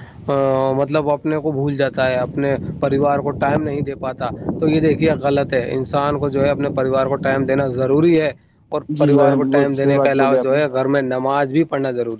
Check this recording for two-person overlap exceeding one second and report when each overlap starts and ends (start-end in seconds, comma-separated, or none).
9.0-10.6